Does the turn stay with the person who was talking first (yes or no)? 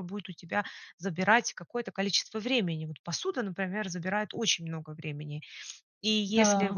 yes